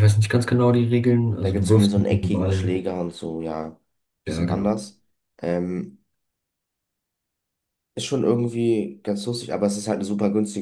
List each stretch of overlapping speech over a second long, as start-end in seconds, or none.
1.4-2.8